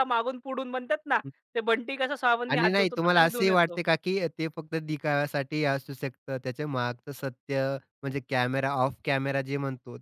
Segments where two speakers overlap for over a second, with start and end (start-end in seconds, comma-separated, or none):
2.5-3.8